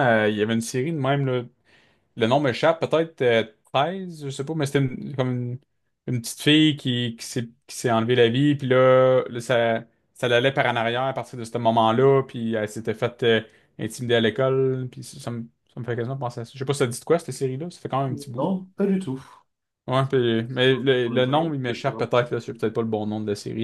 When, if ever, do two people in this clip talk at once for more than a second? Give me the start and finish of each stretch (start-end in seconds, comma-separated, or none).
20.6-22.6